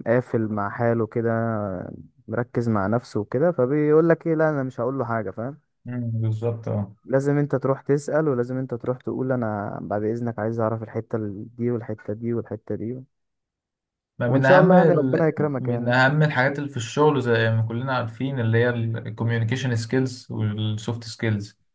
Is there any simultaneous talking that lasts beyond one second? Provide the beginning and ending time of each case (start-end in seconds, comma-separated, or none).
14.3-15.9